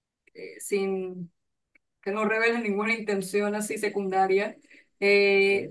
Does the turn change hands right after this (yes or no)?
no